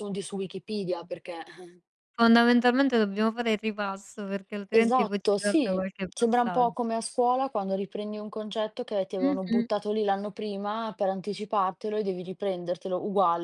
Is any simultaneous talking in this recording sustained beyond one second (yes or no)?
yes